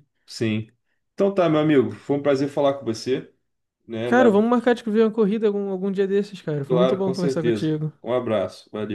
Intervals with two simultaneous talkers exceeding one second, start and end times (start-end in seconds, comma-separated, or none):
6.7-7.9